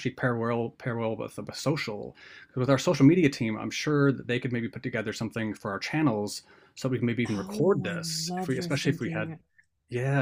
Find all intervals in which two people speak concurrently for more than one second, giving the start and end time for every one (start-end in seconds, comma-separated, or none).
7.3-9.3